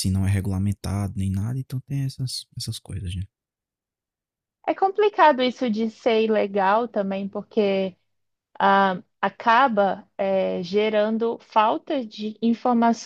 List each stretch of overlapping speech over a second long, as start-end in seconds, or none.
none